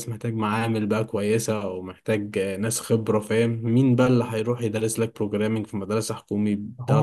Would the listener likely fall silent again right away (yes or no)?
no